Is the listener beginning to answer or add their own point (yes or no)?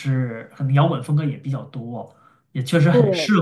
no